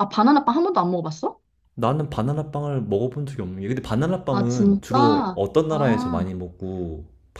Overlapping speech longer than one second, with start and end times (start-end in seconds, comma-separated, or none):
4.3-6.2